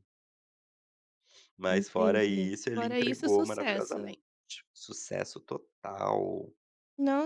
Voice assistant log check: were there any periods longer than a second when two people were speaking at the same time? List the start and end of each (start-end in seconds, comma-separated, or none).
1.7-4.1